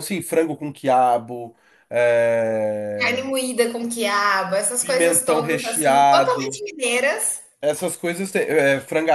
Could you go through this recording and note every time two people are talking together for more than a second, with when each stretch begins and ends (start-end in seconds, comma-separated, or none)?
4.8-6.6